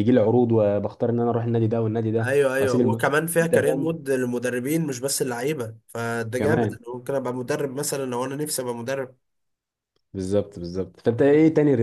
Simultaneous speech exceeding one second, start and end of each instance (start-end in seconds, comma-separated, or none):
2.2-4.0